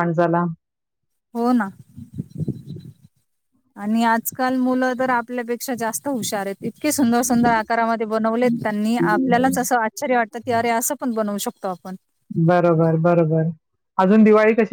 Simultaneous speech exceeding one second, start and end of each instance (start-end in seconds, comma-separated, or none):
none